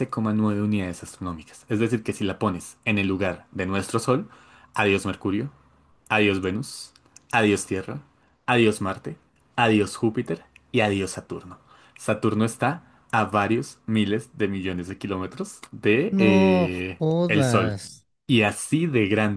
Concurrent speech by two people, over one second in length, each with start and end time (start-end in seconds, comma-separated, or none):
16.2-17.8